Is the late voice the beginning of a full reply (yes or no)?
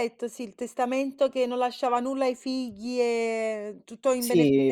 yes